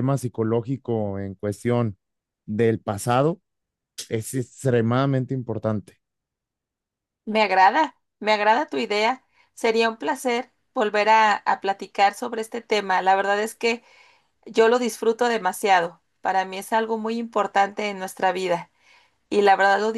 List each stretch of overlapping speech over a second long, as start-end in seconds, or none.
none